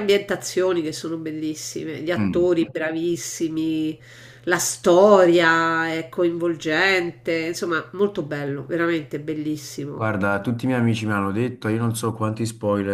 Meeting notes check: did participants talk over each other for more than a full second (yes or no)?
no